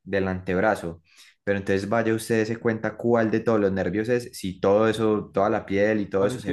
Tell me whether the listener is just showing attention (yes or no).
yes